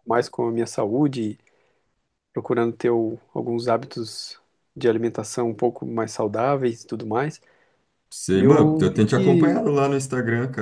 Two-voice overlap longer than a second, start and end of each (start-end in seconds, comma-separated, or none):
8.3-9.6